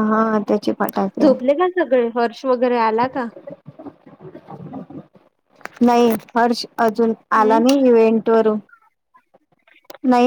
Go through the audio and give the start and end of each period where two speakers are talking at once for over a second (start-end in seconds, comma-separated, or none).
none